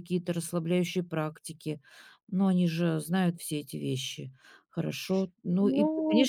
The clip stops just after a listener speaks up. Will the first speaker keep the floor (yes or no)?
yes